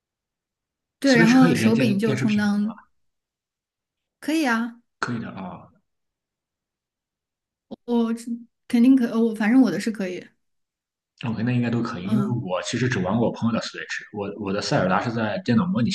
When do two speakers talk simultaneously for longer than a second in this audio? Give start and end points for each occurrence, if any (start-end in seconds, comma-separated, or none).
1.1-2.7